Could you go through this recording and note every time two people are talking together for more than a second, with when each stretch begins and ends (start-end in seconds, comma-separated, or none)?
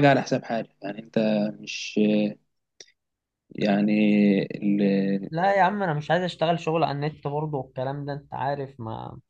none